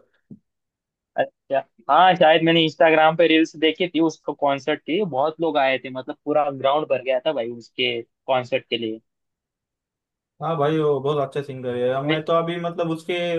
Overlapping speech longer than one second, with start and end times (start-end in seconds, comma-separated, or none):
none